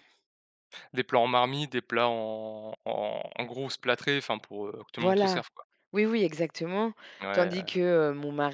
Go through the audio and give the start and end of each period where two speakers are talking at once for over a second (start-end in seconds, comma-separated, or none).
none